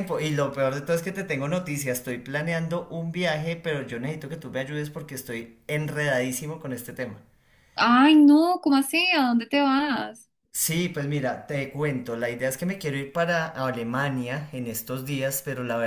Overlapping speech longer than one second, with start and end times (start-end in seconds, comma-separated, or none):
none